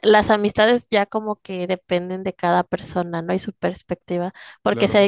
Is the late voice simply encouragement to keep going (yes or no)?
yes